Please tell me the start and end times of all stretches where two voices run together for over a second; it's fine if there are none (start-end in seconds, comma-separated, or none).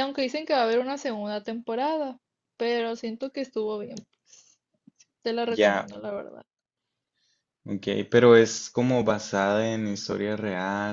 none